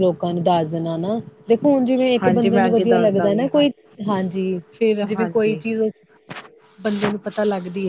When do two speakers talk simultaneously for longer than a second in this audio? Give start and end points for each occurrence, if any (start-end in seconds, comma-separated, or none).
2.2-3.6